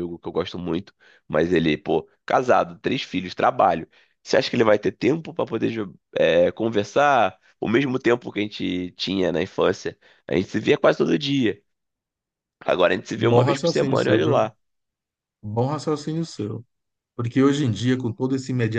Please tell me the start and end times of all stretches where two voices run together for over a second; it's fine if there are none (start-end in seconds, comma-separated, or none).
13.2-14.4